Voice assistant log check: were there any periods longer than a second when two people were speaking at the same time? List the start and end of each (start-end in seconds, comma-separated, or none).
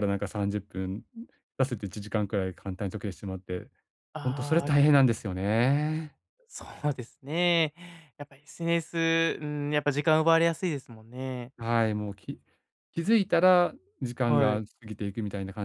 none